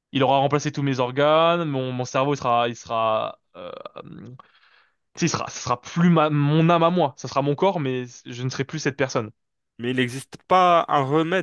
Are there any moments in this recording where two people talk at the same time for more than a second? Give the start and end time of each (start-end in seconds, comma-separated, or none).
none